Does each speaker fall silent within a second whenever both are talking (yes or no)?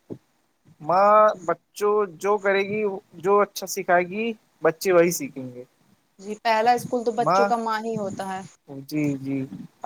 yes